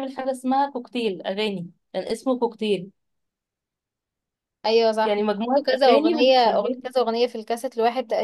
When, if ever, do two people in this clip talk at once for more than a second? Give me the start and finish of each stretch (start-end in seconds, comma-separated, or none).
5.0-6.8